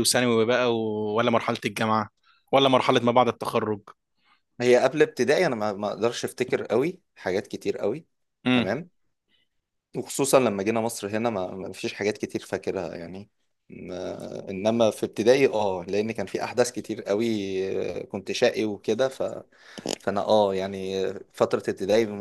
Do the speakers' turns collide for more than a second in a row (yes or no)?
no